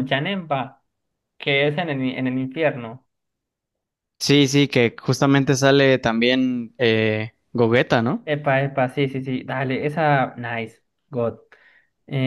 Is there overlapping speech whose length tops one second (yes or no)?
no